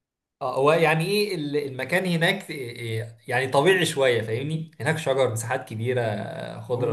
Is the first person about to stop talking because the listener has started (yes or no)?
yes